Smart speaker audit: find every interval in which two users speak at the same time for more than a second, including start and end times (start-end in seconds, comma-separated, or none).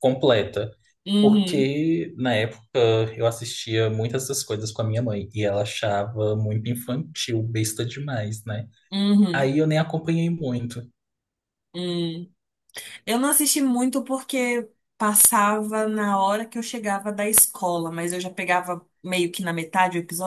none